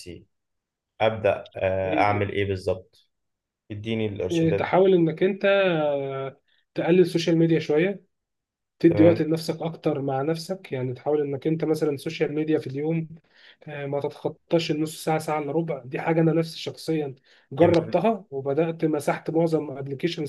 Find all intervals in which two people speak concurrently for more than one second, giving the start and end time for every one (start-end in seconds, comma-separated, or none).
none